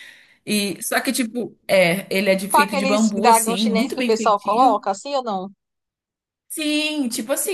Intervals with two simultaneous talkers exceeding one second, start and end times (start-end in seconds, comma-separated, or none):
2.5-4.8